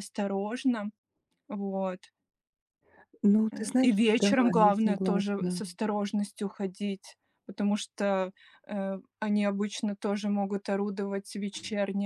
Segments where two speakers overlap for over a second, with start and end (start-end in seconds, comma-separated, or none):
3.5-5.6